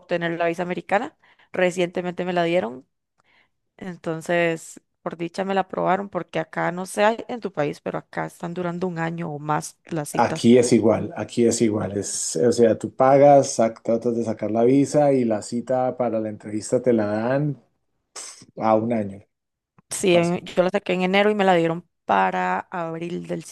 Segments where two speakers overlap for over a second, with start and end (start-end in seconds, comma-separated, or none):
none